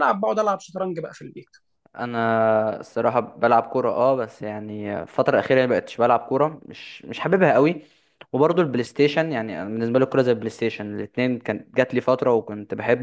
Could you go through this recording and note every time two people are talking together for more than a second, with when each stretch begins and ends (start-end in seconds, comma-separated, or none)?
none